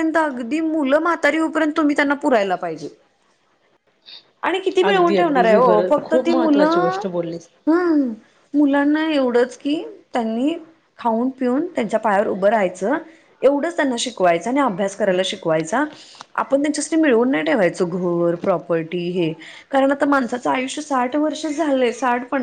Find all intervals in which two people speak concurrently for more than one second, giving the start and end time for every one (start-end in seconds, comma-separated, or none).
4.9-7.0